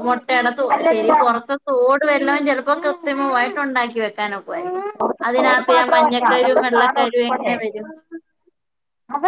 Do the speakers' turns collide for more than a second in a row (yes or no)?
yes